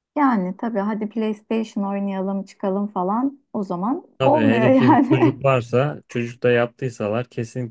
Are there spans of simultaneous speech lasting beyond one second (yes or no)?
yes